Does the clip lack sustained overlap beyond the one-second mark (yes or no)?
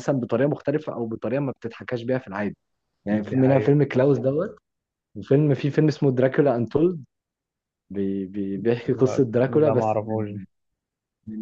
no